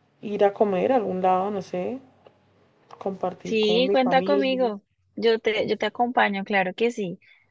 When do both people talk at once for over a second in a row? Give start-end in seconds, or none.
3.4-4.7